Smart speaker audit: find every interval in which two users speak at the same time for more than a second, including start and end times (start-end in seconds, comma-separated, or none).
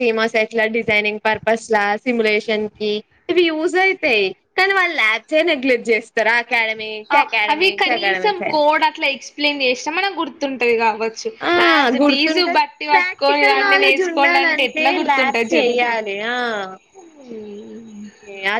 12.9-15.5